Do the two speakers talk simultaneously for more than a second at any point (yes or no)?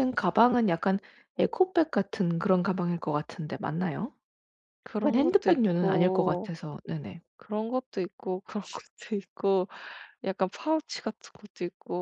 yes